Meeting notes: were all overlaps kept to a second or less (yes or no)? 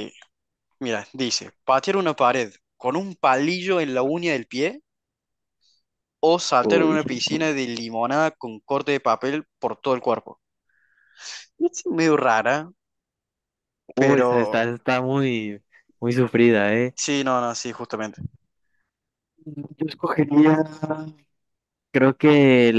yes